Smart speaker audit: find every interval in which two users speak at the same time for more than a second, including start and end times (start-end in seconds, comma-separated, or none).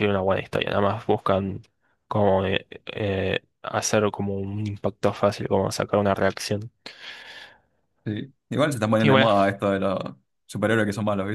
none